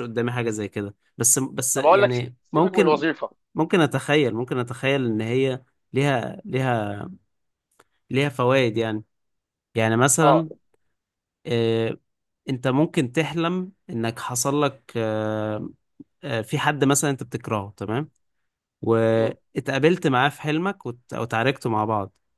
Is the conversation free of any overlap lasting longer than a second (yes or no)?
no